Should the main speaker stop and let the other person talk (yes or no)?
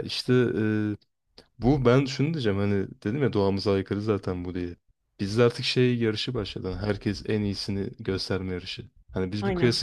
no